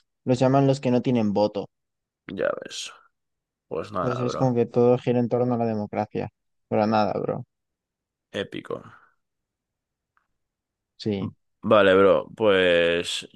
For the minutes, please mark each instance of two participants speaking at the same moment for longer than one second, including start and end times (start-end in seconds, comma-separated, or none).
none